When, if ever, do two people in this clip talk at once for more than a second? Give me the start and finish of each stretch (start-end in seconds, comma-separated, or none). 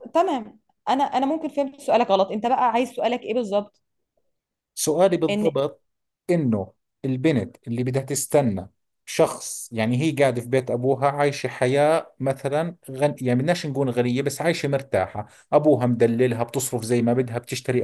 none